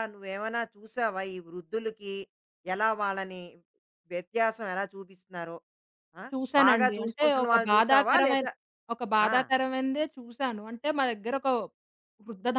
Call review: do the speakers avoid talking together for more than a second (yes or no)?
no